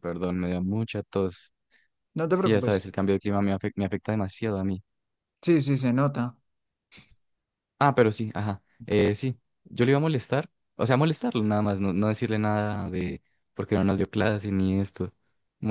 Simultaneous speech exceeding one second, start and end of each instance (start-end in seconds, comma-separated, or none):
none